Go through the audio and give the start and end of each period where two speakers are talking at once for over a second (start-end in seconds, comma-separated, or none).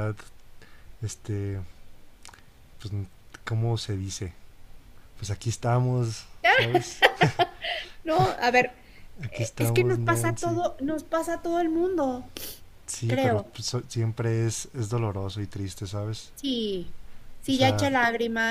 9.3-10.6